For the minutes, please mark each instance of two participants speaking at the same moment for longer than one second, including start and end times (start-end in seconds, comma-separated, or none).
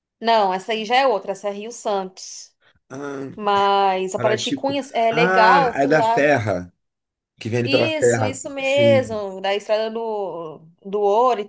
4.2-6.3, 7.6-9.2